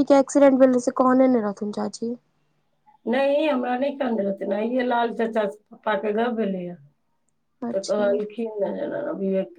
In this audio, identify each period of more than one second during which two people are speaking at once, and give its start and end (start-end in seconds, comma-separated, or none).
none